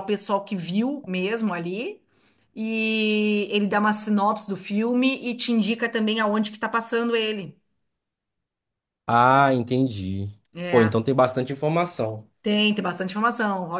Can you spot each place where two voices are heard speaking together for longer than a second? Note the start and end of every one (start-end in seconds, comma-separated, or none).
none